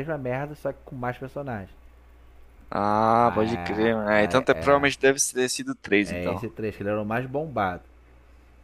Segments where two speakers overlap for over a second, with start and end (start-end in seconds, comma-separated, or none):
3.2-4.9